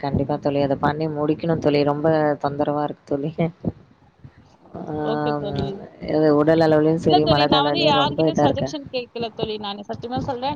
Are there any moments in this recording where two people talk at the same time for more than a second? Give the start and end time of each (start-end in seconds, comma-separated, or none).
7.0-8.7